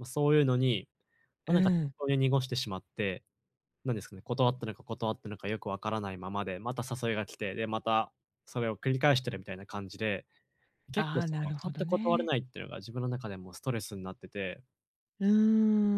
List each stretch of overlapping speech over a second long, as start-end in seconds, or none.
10.9-12.3